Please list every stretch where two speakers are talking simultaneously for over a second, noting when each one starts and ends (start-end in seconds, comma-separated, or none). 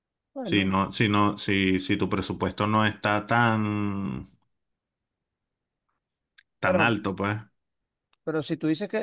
none